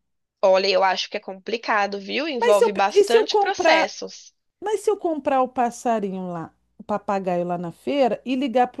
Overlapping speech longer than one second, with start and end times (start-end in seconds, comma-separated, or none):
2.4-3.9